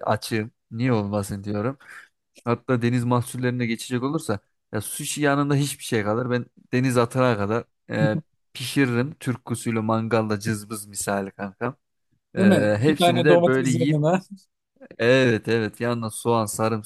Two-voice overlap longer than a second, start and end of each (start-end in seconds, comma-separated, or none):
12.4-14.0